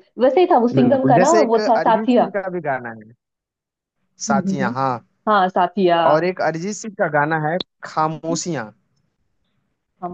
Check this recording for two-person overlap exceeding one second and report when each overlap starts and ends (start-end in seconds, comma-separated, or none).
0.8-2.3